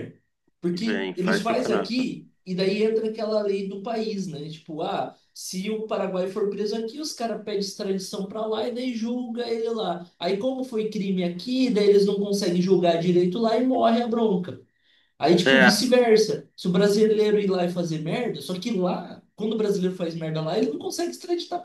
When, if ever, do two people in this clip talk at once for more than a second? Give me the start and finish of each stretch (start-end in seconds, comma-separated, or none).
0.8-2.1